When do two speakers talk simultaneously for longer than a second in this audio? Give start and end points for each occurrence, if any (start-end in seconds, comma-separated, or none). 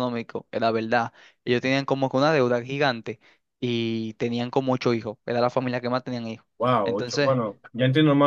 none